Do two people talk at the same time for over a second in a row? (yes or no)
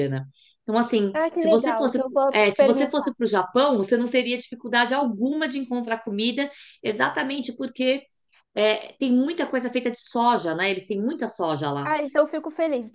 yes